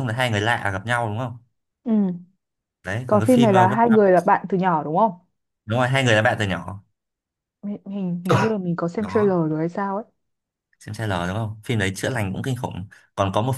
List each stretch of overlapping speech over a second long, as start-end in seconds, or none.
3.0-4.3